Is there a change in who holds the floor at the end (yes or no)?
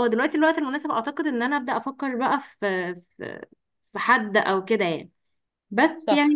no